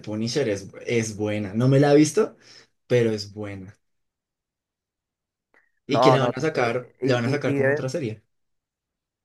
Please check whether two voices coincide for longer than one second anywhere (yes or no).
yes